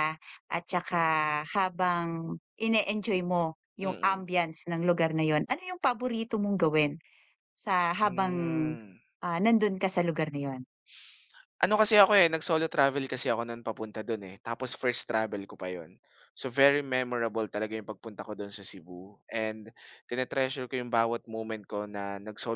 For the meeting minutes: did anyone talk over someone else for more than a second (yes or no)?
no